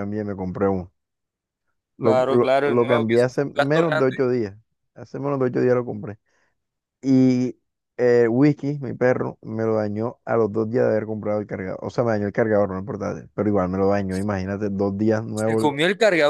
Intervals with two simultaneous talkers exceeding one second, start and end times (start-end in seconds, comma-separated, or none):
2.0-4.2